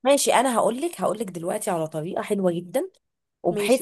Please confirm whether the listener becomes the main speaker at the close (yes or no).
no